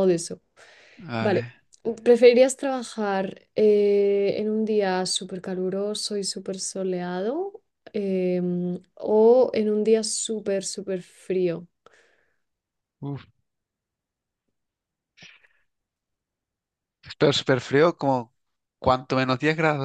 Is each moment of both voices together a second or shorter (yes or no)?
yes